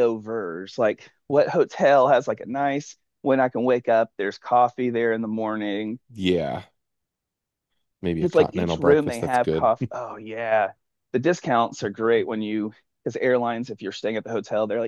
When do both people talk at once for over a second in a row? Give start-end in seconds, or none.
8.1-9.7